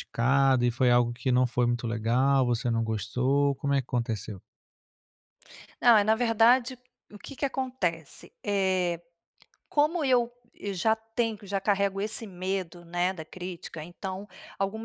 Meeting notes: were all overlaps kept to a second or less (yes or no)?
yes